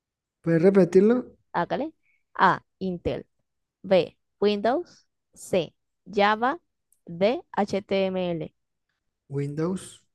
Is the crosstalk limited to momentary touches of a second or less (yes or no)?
yes